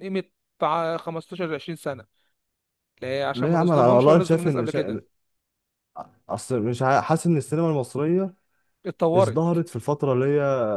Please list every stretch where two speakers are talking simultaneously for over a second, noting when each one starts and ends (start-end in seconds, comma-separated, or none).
3.3-5.0